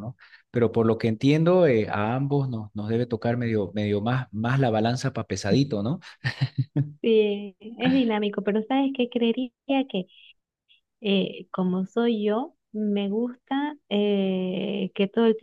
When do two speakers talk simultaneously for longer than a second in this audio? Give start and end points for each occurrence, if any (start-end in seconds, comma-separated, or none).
none